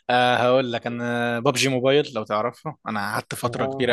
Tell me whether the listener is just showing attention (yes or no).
yes